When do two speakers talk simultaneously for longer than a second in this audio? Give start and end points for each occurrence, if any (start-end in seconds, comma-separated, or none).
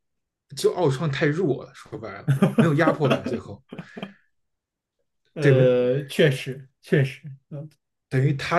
none